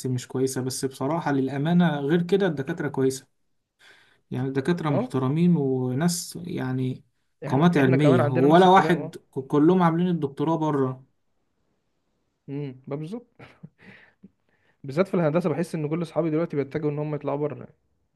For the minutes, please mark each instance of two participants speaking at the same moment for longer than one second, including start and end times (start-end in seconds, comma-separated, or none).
7.5-9.2